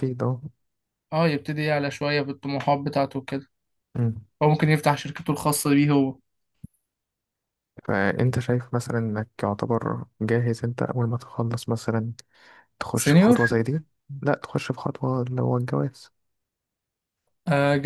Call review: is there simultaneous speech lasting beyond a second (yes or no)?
no